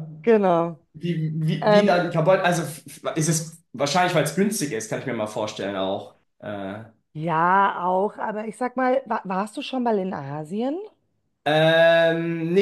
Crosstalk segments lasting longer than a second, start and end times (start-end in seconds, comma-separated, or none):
none